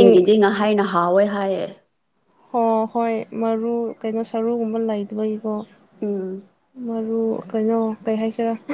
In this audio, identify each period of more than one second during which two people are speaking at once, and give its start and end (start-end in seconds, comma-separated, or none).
none